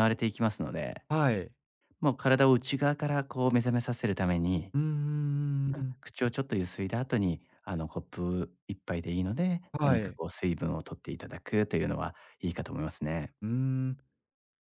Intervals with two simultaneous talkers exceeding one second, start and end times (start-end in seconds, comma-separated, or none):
none